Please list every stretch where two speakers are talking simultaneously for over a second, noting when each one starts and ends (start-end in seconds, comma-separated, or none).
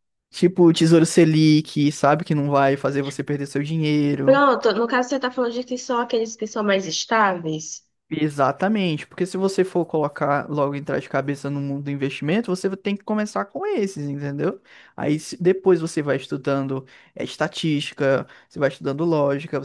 none